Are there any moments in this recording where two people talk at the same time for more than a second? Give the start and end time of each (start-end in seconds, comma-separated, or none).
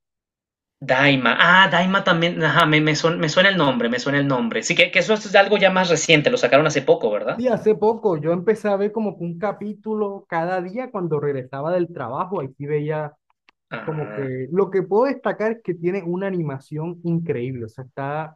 none